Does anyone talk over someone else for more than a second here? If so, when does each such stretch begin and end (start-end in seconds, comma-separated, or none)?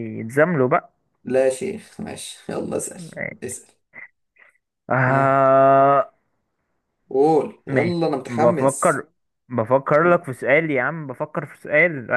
7.7-9.0